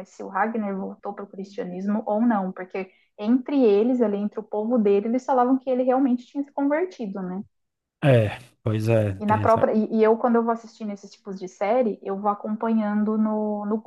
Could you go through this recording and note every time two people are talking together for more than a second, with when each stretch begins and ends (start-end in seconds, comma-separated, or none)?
none